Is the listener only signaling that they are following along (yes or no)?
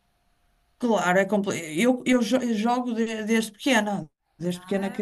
yes